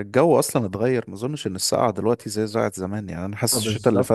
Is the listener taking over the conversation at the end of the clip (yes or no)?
no